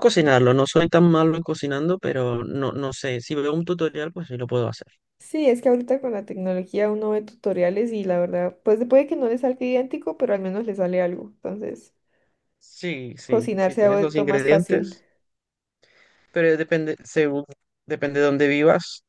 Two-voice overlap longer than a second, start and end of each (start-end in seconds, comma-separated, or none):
13.3-15.0